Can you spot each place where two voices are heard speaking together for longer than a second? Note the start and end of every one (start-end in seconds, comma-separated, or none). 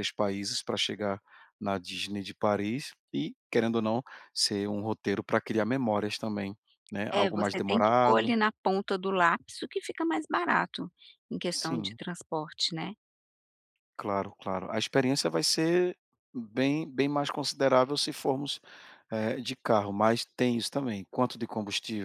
7.1-8.3